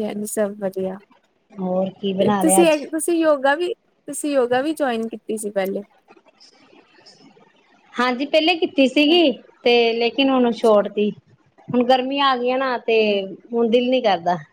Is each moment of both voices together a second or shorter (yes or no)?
yes